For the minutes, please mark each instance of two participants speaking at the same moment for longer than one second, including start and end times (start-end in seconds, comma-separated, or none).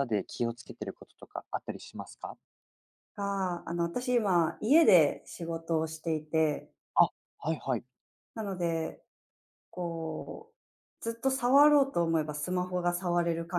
none